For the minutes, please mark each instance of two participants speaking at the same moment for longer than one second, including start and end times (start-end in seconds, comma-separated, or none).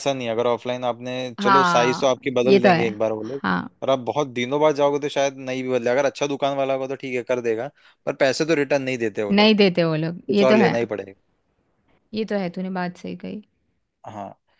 1.4-3.4